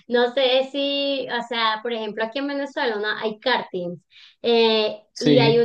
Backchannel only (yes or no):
yes